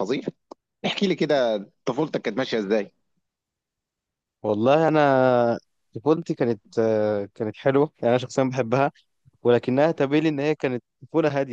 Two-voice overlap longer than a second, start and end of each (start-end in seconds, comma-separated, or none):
none